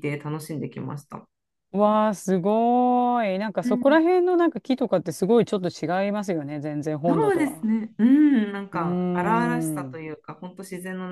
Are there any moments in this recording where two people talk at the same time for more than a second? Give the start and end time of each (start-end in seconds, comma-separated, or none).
8.7-10.0